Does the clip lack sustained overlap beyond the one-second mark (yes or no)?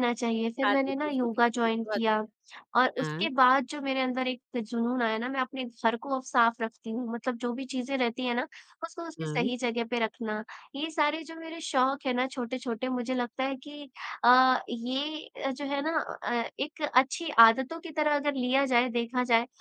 no